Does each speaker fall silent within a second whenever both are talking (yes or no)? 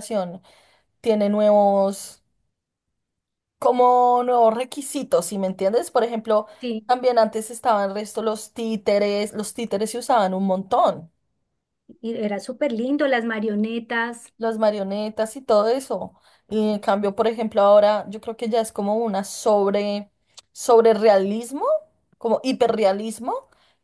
yes